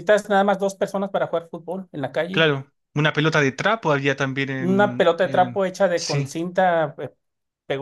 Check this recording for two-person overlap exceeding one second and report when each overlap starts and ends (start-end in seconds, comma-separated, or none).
4.6-6.3